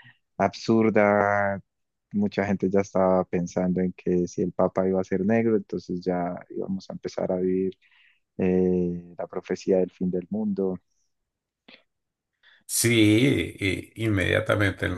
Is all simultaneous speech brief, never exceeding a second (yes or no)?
yes